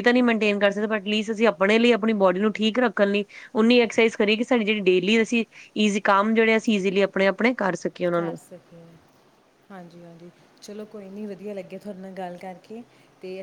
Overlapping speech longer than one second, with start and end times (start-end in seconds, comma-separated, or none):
none